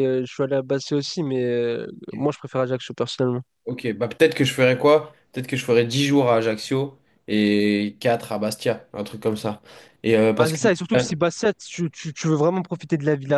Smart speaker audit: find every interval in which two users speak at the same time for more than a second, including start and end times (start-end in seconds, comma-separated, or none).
none